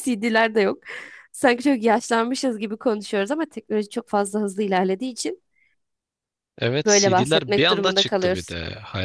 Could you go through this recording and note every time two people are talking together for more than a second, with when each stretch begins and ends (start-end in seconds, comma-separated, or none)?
6.8-8.5